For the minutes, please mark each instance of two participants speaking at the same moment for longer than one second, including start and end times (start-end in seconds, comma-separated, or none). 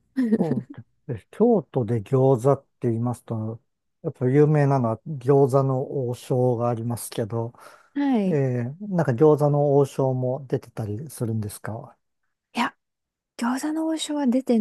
none